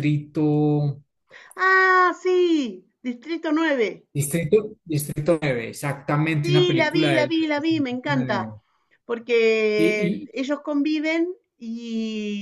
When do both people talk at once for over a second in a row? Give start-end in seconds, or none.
6.5-8.4